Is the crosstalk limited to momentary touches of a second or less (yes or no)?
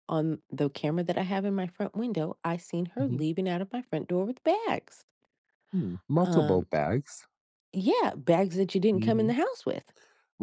yes